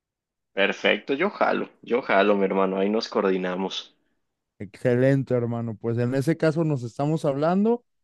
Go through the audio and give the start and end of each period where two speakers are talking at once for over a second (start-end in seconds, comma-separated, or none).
none